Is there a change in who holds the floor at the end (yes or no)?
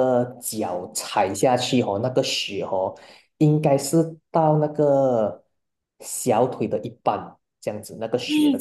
yes